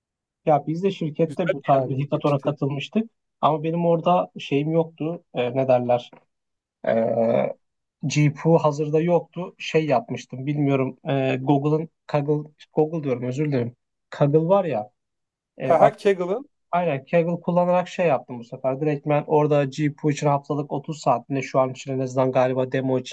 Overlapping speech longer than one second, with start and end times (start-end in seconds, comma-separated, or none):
1.3-2.5